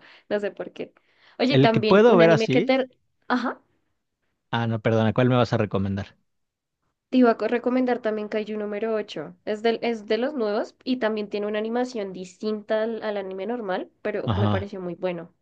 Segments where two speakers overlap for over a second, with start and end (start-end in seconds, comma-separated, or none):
1.5-2.7